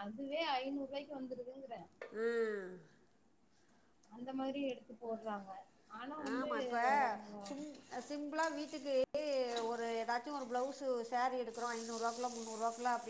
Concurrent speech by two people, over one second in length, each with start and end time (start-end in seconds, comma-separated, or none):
none